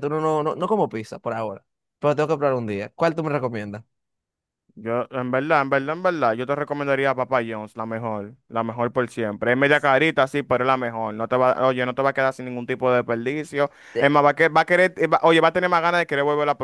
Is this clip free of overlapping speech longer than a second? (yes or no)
yes